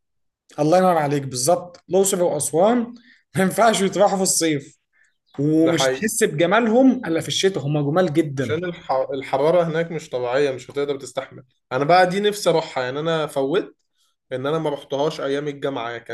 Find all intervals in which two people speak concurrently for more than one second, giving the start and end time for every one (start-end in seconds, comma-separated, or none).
none